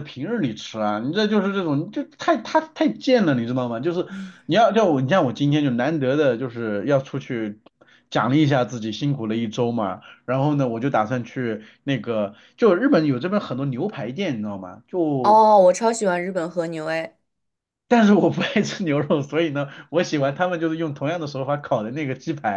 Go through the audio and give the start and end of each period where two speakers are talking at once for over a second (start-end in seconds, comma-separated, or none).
none